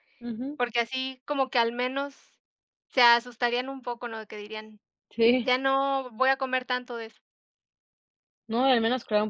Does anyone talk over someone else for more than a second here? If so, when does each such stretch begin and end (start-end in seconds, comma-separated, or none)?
none